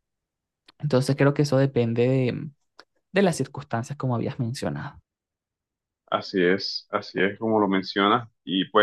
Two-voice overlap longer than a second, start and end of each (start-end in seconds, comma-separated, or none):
none